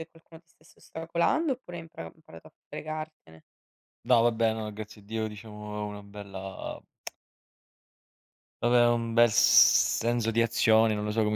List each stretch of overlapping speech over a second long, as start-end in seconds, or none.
none